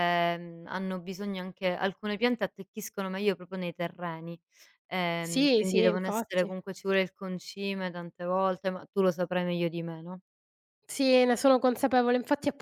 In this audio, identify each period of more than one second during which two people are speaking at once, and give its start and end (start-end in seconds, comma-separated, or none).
5.2-6.5